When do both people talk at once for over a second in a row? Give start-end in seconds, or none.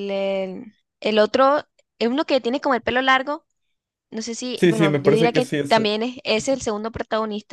4.5-6.6